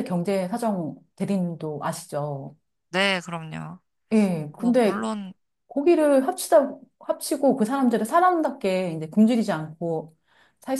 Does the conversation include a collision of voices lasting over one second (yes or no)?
no